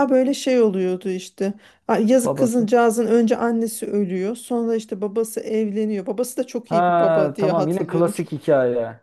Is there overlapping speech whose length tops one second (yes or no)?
yes